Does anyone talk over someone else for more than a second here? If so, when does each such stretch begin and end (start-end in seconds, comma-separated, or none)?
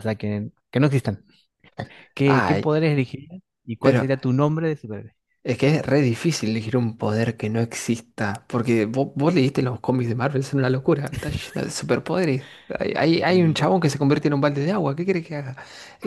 none